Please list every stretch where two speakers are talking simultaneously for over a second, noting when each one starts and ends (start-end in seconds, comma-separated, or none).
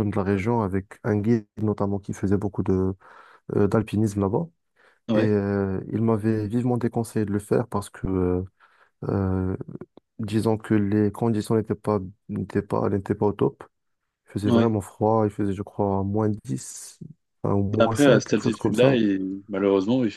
17.7-19.0